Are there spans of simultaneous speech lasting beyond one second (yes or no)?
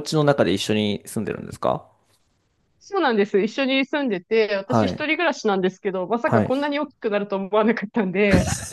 no